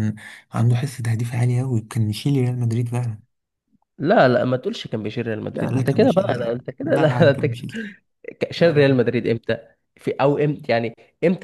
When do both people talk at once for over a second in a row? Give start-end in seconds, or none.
5.5-7.7